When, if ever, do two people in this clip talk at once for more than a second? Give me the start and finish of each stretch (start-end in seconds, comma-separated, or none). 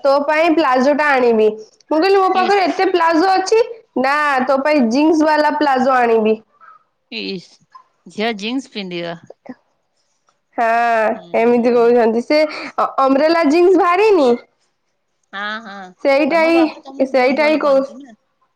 16.3-17.8